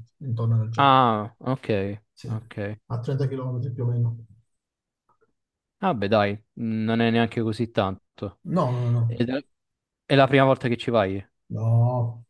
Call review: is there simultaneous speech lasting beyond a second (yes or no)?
no